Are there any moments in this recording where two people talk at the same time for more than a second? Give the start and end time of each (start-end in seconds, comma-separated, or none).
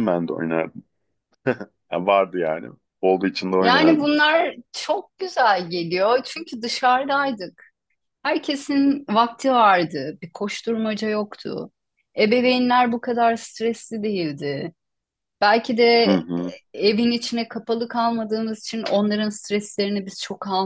none